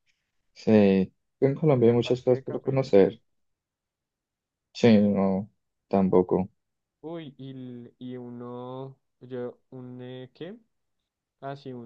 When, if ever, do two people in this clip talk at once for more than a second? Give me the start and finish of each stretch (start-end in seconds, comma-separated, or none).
1.8-3.2